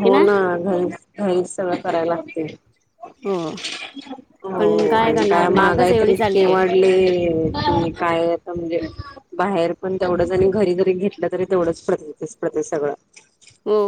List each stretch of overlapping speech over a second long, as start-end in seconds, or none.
4.6-6.6